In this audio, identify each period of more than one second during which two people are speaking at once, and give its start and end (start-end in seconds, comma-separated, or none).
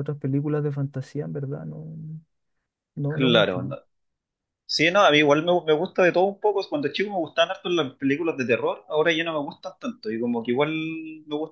none